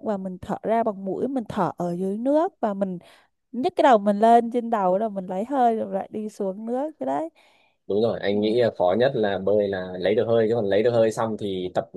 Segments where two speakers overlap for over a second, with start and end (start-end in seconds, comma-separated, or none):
none